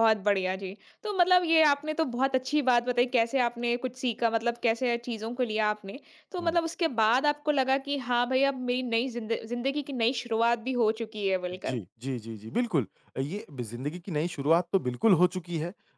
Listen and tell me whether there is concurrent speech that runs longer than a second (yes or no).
no